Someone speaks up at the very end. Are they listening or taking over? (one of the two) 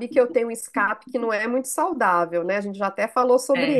taking over